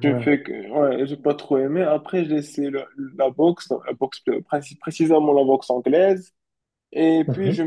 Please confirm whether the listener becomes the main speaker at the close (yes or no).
no